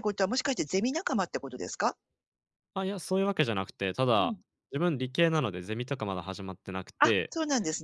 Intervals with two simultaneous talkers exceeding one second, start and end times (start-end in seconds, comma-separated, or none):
none